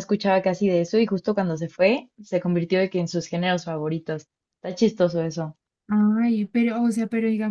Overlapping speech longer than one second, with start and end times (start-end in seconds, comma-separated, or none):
none